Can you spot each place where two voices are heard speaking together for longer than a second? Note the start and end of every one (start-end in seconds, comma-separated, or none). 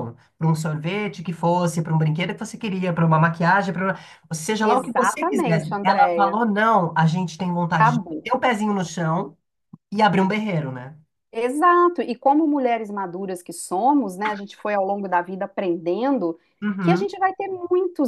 4.6-6.4